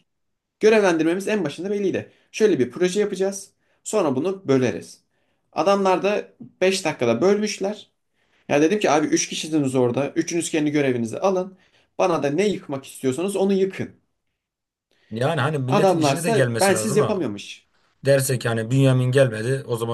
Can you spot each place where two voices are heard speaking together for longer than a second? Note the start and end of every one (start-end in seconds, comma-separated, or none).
15.7-17.2